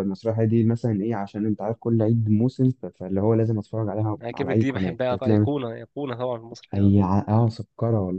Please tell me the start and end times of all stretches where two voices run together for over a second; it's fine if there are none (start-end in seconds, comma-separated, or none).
4.2-5.5